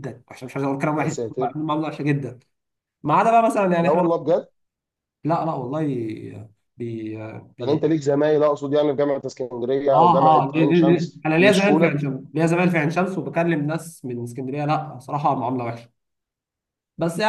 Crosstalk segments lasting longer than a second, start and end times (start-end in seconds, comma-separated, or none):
9.9-12.1